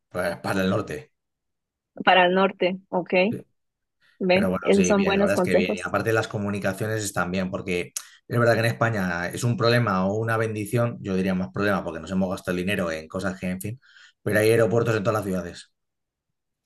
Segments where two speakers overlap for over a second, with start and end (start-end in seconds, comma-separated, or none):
4.3-5.8